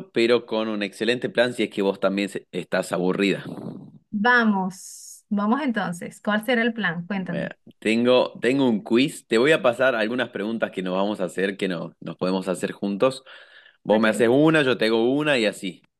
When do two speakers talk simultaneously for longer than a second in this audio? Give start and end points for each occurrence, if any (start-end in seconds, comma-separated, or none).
none